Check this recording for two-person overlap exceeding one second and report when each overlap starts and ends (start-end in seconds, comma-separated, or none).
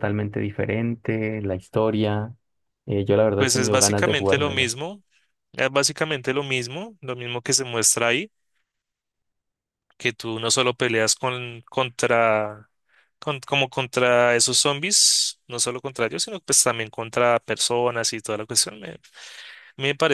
3.4-4.7